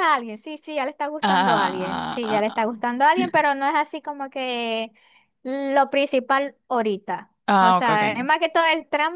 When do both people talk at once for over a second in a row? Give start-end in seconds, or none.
1.2-2.6